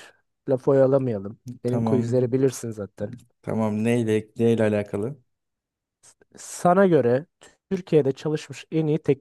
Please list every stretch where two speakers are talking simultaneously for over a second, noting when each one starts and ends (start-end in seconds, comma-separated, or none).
none